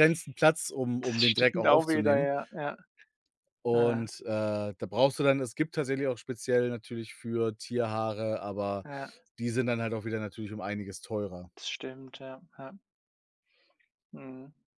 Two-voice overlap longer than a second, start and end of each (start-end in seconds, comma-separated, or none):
1.0-2.3